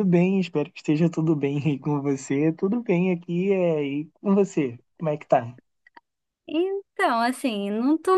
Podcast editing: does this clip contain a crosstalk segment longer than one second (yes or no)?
no